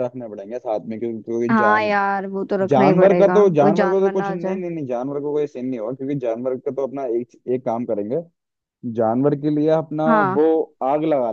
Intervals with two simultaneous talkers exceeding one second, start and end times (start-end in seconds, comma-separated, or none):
2.7-4.6